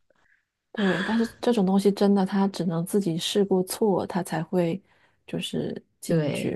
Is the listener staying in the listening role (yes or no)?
no